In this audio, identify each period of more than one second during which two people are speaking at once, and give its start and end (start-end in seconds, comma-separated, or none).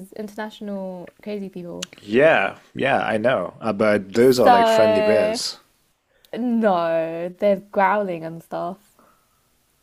4.2-5.4